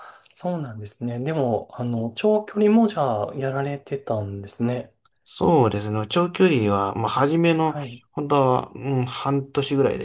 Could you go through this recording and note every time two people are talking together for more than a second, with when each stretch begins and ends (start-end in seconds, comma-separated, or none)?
none